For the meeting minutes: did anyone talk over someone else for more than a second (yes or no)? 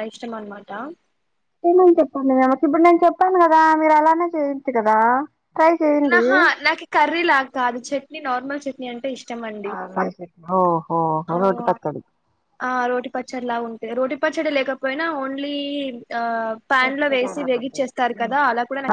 yes